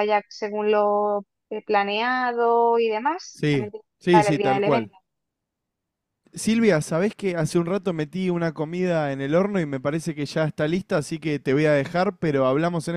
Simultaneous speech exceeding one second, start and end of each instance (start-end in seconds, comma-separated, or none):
3.3-4.9